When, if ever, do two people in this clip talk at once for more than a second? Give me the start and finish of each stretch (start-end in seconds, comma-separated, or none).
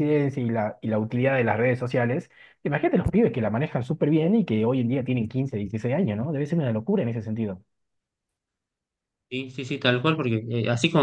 none